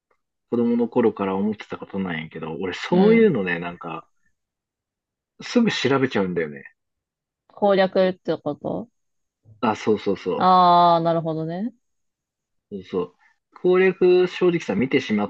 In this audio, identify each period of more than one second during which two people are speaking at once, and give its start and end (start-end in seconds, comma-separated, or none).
none